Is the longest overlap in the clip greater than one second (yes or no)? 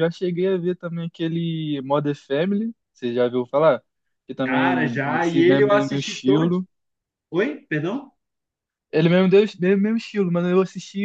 yes